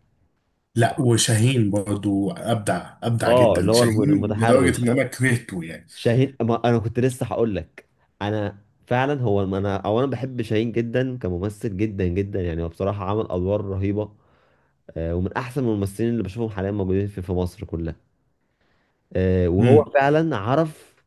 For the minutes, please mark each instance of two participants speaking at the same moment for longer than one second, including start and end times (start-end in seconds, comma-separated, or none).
3.3-4.9